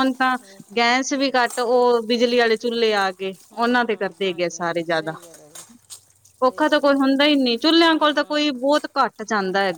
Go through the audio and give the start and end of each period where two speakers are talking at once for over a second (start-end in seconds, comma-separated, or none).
3.5-5.1